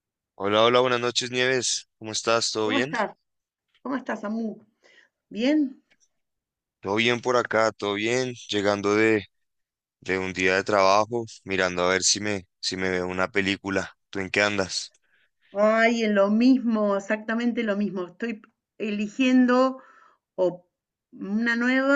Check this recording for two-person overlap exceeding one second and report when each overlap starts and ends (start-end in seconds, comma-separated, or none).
none